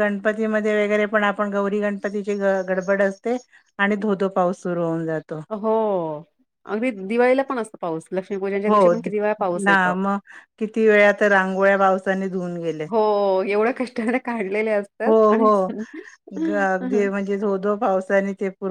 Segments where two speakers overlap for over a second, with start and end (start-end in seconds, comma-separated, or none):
none